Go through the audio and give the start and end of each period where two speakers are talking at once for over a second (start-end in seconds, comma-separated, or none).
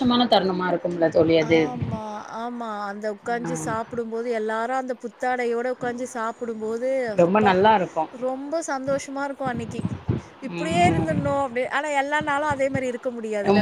none